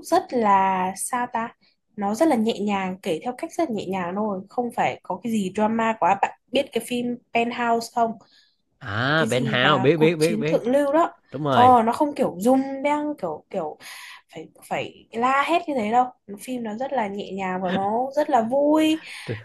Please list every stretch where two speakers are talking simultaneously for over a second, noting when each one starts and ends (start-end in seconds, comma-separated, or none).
9.2-10.6